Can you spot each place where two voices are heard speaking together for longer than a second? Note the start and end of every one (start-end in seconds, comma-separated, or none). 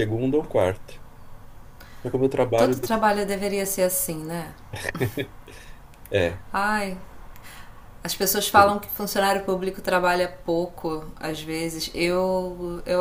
none